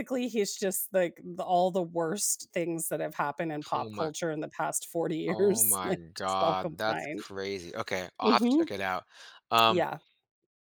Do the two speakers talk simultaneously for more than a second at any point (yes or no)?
yes